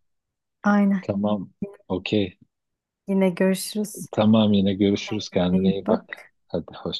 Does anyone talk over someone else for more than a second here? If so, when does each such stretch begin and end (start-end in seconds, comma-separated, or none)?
5.1-6.3